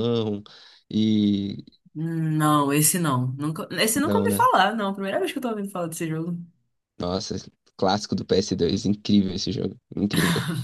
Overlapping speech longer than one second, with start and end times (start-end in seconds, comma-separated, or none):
none